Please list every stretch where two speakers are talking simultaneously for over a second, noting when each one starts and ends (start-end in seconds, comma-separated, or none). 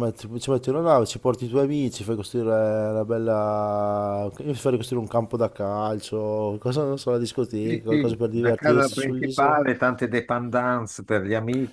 7.6-9.6